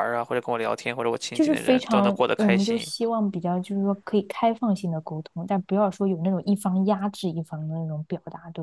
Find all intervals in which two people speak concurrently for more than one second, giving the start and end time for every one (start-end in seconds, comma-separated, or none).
1.3-2.9